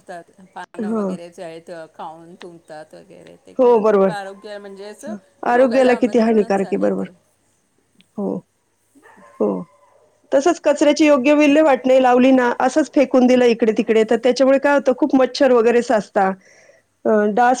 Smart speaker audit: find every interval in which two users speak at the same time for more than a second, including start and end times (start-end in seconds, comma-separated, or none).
5.6-7.0